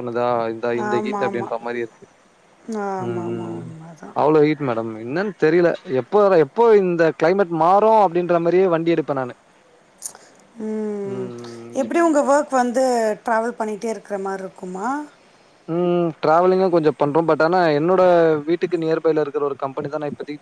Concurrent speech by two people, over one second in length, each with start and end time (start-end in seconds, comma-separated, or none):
none